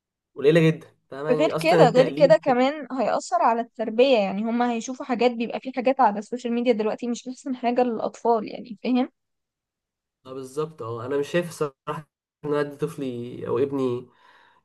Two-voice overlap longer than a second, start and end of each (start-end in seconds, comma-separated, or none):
1.3-2.7